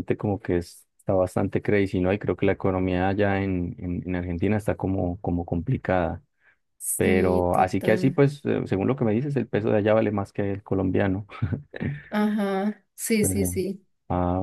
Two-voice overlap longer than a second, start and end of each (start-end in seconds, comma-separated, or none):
7.0-8.2